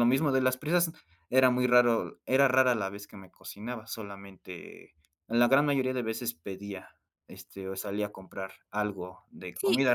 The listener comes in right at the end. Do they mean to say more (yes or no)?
yes